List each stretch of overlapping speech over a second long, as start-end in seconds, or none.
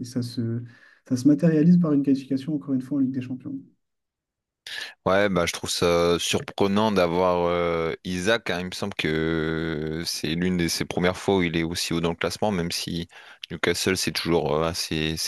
none